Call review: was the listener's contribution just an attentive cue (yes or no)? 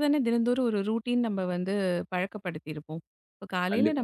yes